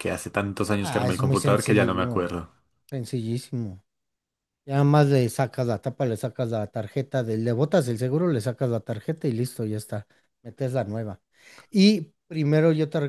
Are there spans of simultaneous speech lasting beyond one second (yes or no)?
yes